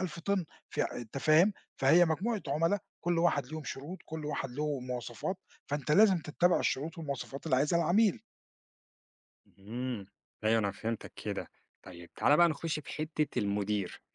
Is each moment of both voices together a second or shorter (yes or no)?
yes